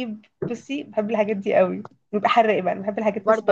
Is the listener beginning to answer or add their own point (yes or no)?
yes